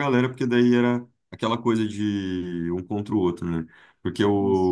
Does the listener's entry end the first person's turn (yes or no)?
no